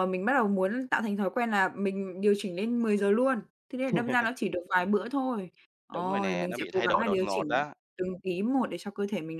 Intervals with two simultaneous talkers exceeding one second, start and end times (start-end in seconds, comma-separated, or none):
5.9-7.7